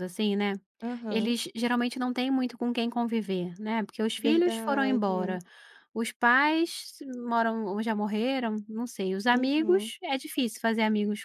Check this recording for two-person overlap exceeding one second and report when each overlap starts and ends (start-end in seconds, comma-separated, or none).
4.2-5.4